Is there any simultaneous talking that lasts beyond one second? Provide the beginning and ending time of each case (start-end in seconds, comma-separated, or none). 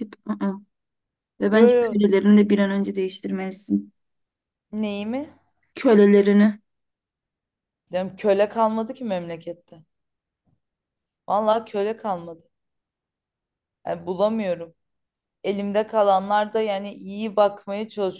none